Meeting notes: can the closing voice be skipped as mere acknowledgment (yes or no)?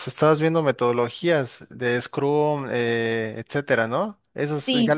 no